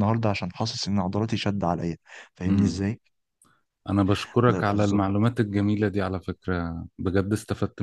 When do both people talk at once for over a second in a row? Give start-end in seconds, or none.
none